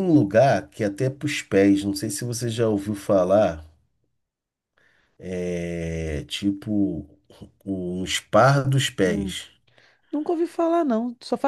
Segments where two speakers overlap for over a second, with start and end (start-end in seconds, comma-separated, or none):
none